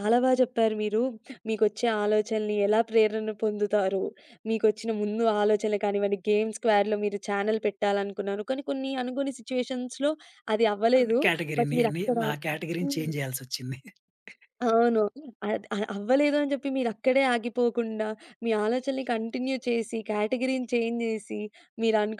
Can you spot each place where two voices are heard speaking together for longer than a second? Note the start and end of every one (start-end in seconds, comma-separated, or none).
none